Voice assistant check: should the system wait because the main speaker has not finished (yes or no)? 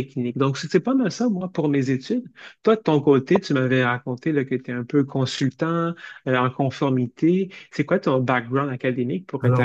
no